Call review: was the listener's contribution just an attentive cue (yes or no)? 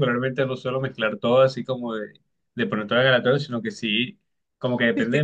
yes